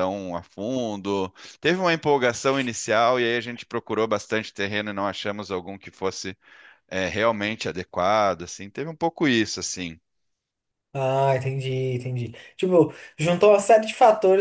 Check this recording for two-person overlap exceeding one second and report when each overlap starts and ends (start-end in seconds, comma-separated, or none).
none